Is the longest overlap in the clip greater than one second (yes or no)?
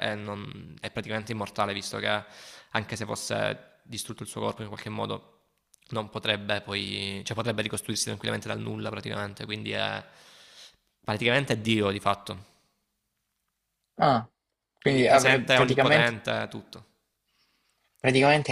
yes